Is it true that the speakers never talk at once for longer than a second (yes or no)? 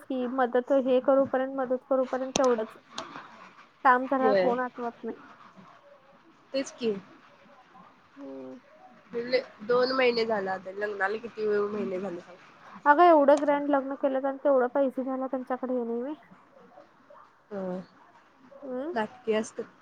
yes